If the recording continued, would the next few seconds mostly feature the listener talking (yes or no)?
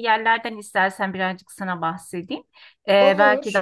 no